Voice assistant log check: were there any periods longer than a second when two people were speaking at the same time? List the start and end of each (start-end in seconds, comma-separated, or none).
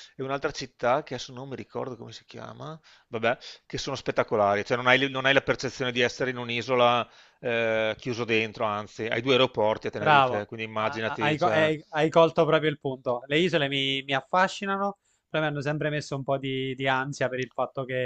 9.9-11.7